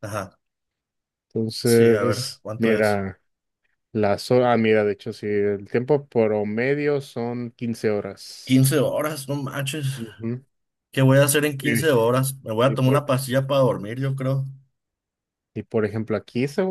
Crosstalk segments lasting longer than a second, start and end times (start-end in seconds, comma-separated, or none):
1.6-3.0